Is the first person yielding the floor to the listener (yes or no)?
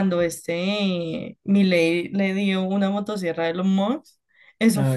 no